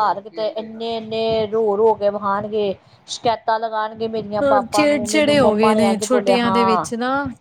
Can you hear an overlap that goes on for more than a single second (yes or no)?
yes